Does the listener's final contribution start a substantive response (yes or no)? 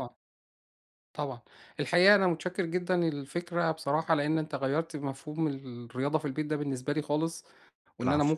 no